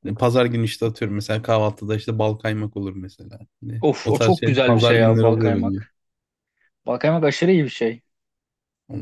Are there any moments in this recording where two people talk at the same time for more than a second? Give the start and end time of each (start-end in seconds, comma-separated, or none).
3.8-5.8